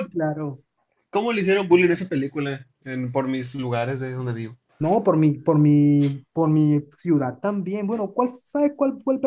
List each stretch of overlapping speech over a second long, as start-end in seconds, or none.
none